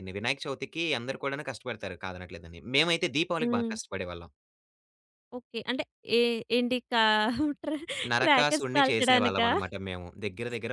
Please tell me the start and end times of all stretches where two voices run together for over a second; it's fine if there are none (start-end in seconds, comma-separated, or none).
8.2-9.5